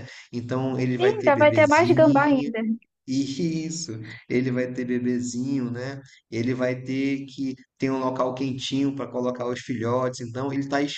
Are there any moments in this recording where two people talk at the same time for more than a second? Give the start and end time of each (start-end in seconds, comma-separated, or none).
1.0-2.5